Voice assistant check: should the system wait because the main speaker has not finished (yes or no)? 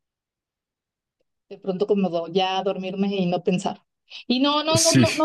yes